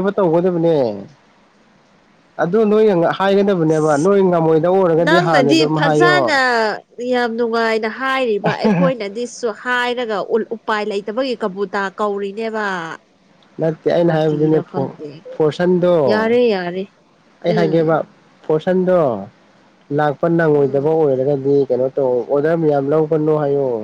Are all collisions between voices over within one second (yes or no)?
no